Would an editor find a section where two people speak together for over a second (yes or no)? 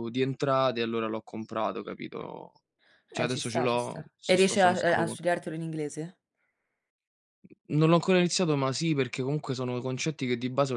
yes